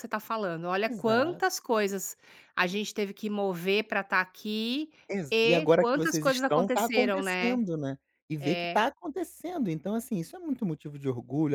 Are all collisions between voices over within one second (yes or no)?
no